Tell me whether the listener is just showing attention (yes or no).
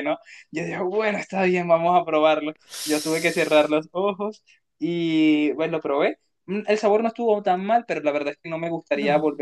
yes